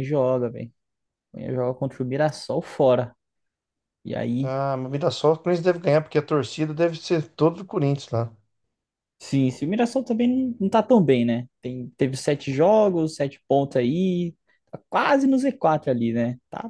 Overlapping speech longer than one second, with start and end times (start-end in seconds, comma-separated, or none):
none